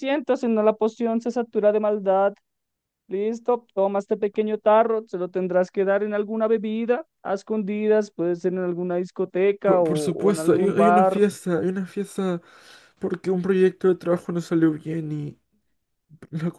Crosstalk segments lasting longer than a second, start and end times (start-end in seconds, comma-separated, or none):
9.6-11.2